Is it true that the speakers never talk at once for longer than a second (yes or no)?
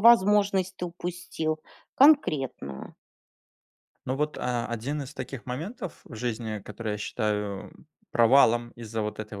yes